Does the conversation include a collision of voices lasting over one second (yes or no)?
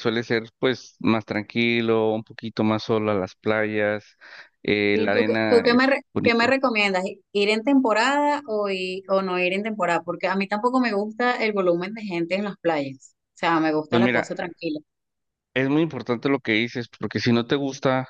yes